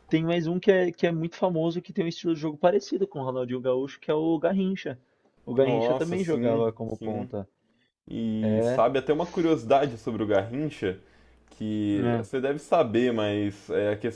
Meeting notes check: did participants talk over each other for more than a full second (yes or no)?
yes